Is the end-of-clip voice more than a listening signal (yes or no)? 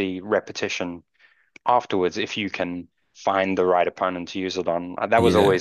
no